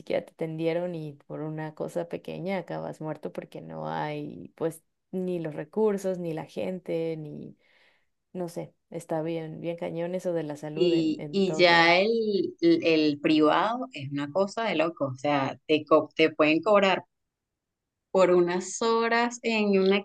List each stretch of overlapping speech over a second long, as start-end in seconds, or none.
10.7-12.0